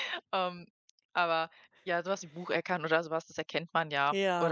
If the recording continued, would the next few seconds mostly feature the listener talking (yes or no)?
no